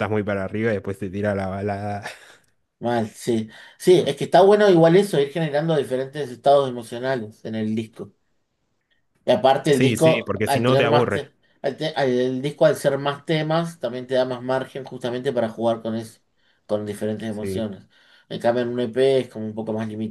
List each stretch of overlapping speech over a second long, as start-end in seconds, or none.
9.7-11.3